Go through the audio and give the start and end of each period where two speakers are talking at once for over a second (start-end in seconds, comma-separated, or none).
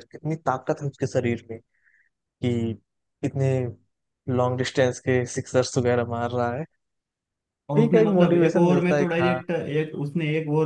7.8-9.4